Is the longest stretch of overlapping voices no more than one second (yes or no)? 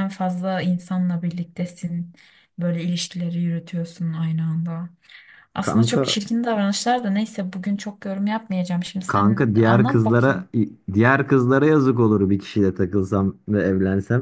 no